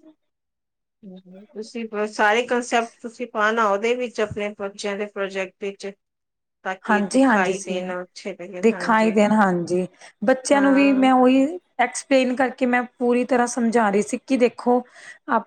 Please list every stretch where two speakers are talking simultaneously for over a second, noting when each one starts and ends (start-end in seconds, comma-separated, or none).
none